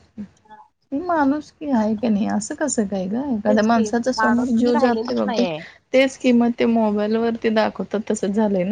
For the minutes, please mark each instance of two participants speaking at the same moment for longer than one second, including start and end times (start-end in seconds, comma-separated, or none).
3.5-5.4